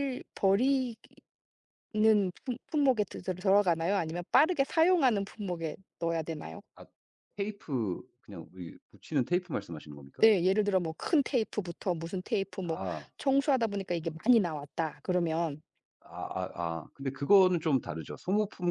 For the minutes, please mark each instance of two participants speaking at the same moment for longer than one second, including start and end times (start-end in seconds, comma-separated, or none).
none